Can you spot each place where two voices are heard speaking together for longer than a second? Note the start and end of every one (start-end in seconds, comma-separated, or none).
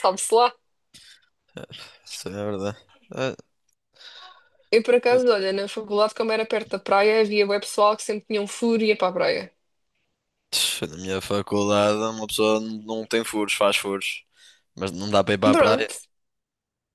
none